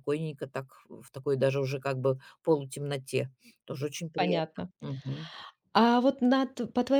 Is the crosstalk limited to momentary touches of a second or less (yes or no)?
yes